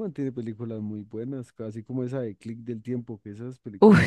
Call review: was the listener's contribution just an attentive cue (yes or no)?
no